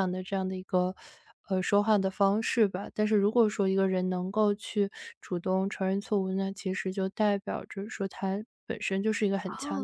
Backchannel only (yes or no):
no